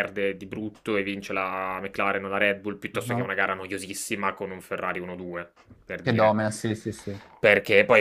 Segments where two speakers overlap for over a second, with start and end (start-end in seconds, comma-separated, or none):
none